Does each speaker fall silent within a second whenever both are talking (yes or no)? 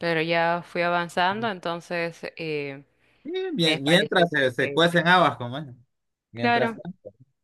no